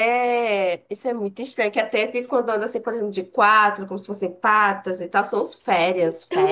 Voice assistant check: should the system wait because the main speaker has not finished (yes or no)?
no